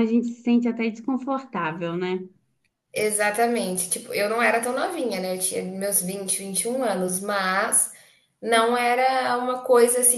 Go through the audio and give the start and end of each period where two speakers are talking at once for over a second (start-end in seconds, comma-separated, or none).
none